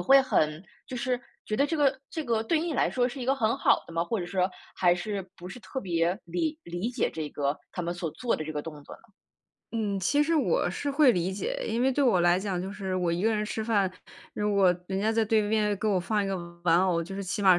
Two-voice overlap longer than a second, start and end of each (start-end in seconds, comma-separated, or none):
none